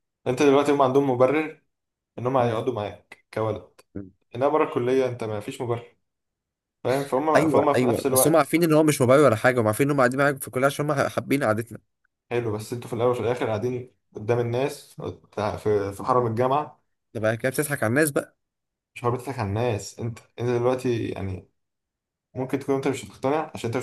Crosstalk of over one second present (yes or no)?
yes